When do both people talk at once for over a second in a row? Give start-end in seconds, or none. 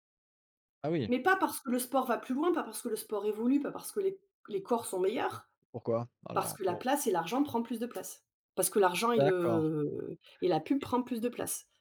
none